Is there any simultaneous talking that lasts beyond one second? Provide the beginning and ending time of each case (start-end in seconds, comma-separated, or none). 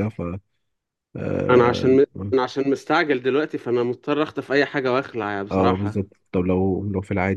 none